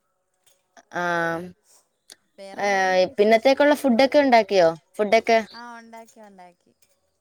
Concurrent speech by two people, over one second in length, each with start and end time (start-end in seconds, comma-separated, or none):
2.7-4.0